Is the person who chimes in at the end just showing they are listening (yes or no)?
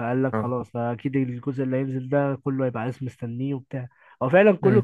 yes